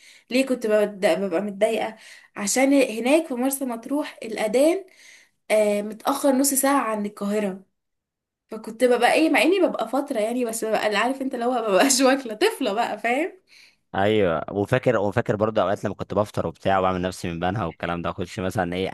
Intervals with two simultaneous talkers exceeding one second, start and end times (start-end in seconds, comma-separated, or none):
none